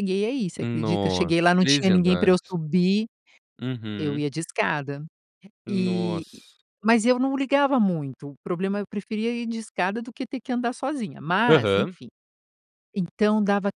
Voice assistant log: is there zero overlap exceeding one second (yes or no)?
no